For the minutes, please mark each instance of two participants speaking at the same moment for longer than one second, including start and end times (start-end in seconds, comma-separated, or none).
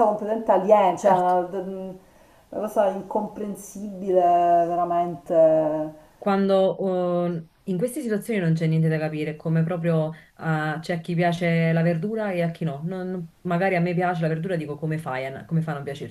none